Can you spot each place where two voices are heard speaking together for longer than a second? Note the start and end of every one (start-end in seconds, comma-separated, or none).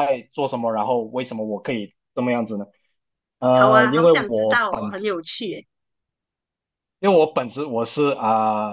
3.5-4.9